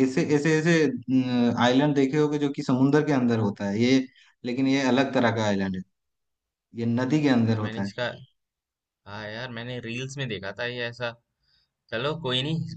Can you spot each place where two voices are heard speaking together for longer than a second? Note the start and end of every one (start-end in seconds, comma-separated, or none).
none